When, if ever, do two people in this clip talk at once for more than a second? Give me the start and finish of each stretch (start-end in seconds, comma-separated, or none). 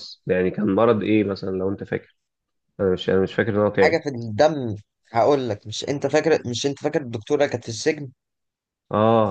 none